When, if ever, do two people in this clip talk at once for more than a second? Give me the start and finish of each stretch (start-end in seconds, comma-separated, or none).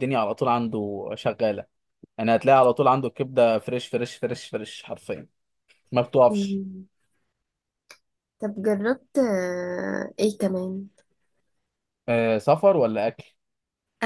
none